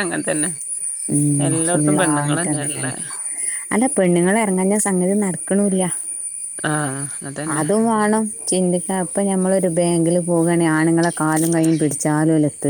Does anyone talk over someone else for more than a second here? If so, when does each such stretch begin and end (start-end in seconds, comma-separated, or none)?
1.5-2.9